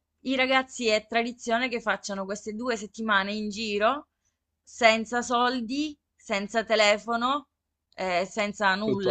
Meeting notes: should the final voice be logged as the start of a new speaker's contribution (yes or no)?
no